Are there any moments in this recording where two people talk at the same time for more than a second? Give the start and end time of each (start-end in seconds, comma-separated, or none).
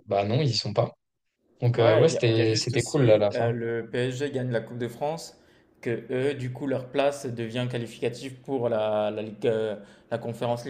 1.7-3.5